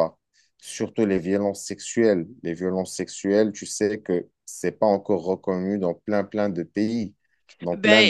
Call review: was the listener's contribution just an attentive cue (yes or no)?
no